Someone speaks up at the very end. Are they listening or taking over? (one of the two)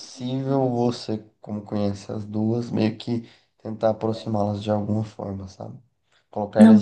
listening